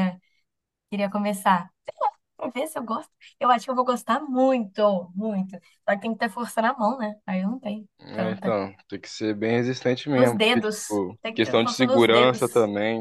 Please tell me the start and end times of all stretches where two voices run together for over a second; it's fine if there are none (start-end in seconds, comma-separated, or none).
10.2-12.4